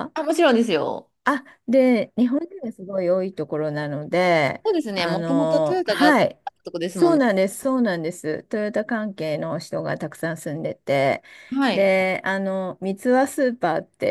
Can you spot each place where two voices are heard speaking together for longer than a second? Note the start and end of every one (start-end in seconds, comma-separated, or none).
4.6-6.2